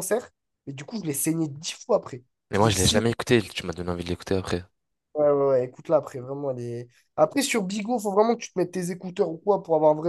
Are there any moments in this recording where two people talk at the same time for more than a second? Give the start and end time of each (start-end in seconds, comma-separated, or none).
none